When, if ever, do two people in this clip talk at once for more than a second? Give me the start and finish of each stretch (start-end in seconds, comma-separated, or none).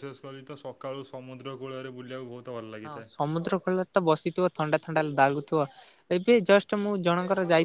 none